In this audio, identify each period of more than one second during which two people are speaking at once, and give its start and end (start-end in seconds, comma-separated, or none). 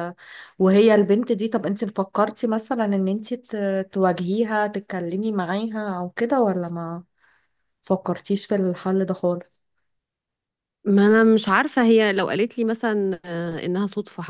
none